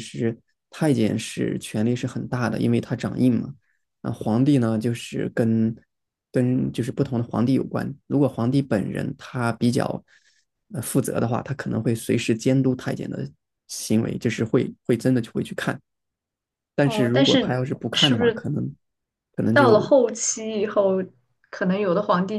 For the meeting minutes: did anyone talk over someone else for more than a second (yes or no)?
yes